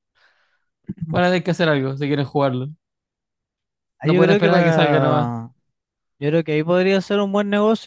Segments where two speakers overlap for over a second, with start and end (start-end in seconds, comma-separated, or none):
4.0-5.3